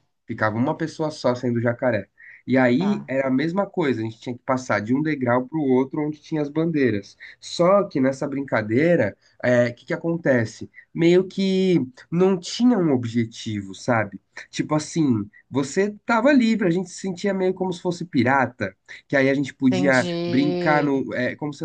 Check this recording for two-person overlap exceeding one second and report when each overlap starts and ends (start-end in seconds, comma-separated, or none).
19.7-20.9